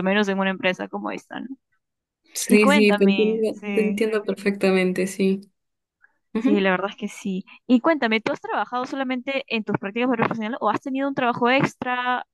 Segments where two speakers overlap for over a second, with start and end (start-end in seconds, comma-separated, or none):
2.5-4.0